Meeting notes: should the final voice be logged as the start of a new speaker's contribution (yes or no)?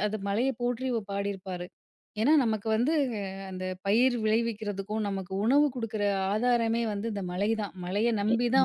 no